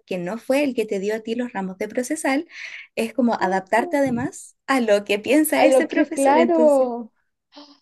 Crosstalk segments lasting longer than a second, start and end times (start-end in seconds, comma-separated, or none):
5.6-6.9